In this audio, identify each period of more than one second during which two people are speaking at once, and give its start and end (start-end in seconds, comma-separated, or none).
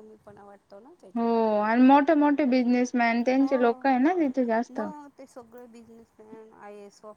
2.4-3.8